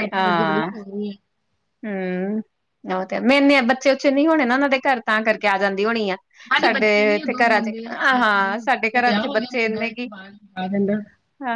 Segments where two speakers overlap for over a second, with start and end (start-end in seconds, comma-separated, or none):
6.6-10.1